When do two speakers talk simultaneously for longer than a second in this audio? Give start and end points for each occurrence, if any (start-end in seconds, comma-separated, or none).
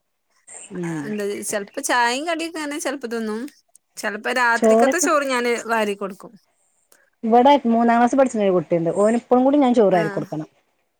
none